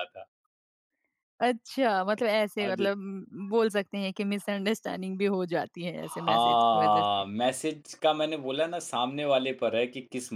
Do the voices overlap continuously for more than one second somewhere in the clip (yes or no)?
yes